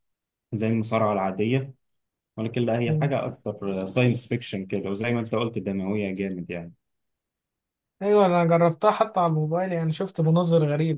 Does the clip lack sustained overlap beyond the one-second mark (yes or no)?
yes